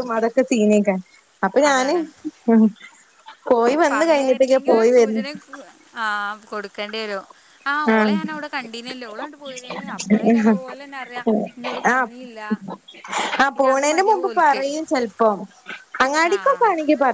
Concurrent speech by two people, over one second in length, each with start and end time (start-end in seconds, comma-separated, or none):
none